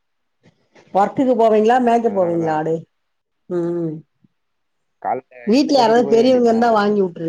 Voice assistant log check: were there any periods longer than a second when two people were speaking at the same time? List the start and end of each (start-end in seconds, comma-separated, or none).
5.5-6.7